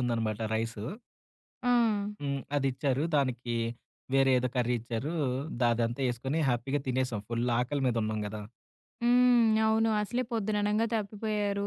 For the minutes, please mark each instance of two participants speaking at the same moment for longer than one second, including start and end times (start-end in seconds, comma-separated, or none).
none